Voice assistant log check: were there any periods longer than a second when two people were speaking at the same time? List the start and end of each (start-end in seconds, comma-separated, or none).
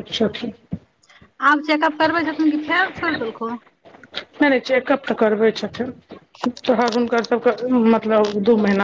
none